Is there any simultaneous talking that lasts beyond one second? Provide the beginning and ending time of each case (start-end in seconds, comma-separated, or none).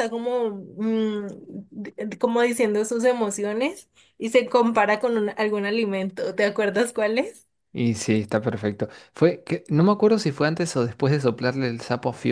none